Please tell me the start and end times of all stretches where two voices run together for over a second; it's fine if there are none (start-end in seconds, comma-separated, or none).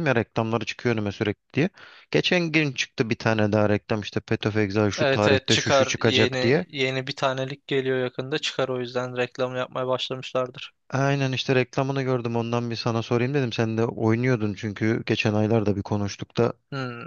5.0-6.7